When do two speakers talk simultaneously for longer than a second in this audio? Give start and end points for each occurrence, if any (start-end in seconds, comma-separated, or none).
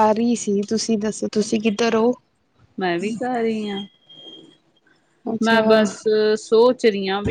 none